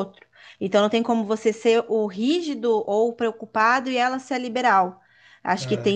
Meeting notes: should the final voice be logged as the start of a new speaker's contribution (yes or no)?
no